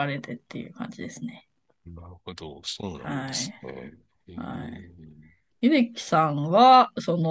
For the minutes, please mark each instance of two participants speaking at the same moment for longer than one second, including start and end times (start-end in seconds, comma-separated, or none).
none